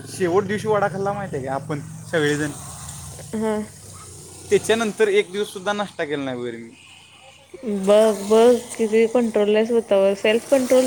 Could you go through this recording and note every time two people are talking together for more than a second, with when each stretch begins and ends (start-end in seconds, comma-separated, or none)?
none